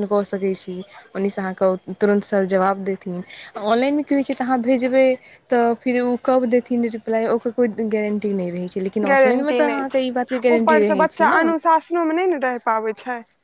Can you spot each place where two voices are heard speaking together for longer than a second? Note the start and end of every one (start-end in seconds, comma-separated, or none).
9.1-11.4